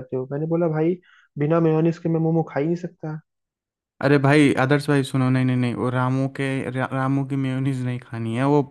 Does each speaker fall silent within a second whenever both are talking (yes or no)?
yes